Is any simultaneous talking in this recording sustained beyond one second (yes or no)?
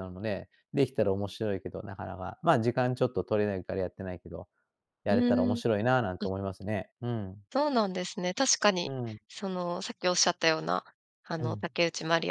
no